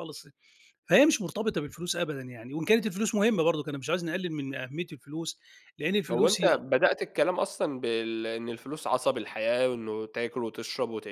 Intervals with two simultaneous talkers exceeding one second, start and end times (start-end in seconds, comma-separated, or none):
none